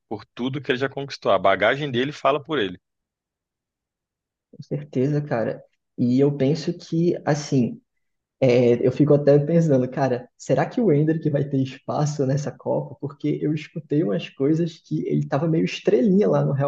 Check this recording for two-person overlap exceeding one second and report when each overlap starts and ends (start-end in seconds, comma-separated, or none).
none